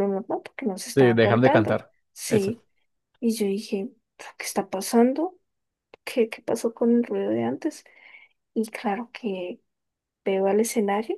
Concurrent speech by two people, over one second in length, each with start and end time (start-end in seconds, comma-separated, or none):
0.9-2.5